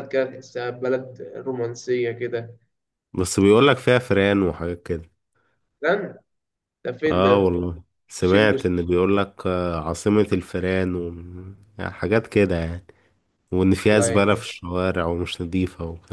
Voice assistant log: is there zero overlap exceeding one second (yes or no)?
yes